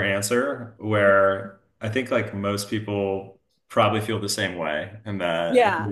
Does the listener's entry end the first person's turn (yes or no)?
no